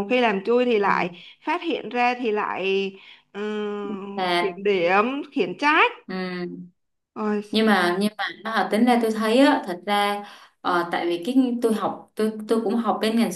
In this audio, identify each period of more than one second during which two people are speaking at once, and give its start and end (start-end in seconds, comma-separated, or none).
none